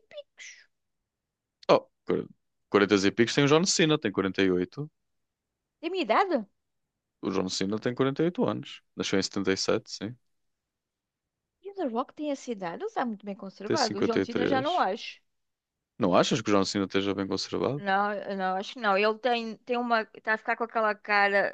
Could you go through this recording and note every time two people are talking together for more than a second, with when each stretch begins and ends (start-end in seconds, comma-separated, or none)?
13.6-14.8